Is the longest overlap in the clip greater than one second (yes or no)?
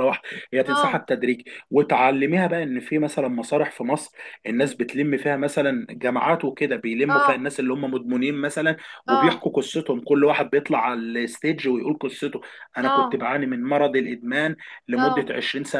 no